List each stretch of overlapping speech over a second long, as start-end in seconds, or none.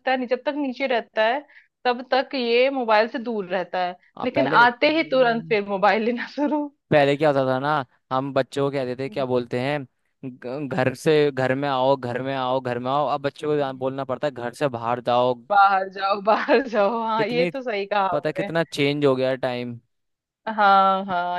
none